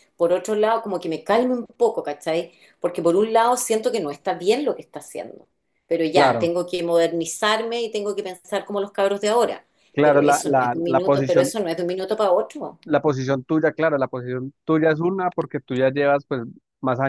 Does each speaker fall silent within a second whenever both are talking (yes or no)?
no